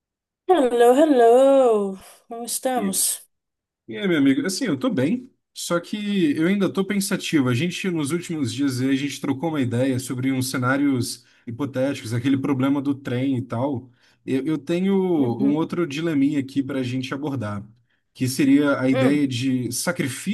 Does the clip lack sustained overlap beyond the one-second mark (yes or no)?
yes